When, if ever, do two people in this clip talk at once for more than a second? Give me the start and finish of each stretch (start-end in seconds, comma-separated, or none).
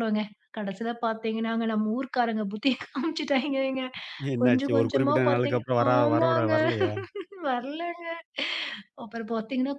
4.4-6.5